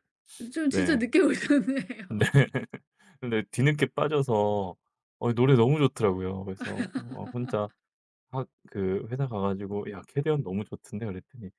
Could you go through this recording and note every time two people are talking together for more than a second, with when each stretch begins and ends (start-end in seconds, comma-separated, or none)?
none